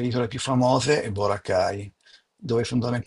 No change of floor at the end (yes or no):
yes